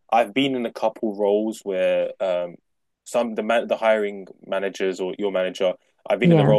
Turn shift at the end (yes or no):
no